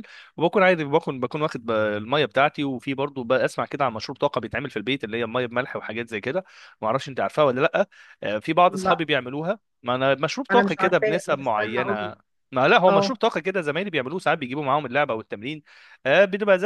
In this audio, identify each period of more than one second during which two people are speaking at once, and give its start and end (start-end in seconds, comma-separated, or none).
10.5-12.1